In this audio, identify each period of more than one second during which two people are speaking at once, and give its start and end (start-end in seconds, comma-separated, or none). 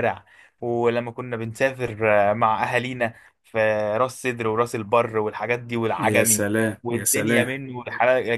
6.0-7.5